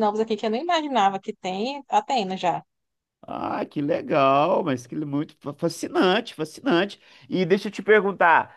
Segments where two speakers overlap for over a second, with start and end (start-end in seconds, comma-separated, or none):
none